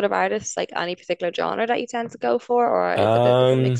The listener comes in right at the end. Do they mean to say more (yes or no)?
yes